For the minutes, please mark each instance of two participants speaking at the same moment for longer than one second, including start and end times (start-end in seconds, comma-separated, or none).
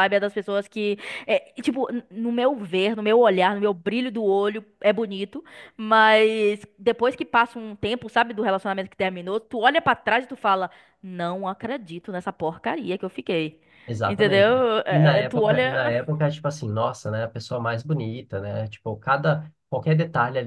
14.1-15.9